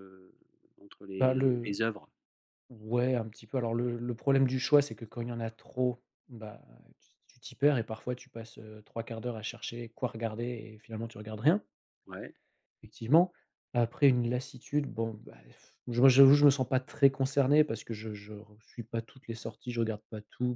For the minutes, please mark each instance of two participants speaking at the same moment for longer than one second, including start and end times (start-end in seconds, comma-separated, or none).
none